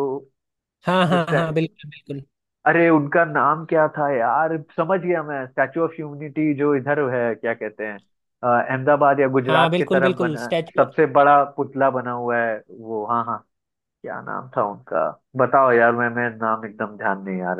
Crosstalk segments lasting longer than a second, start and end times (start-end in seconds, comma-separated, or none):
9.5-10.9